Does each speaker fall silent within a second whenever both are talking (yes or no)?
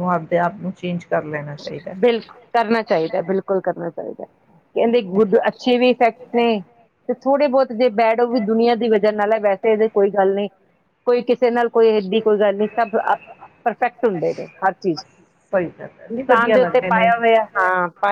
no